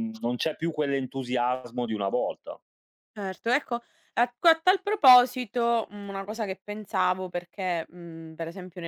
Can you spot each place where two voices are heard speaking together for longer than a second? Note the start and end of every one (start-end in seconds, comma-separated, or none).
none